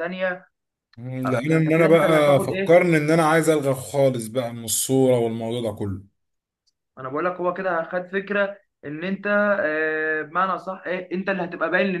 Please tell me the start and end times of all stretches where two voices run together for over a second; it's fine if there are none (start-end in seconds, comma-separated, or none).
1.2-2.8